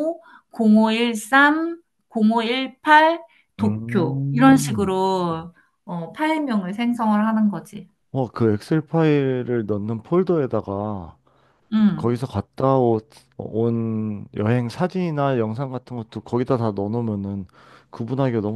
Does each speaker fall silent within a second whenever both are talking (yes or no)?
no